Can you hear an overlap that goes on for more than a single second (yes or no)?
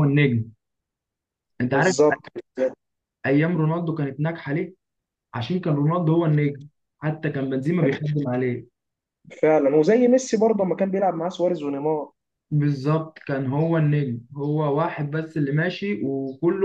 no